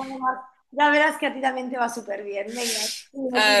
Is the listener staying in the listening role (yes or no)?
no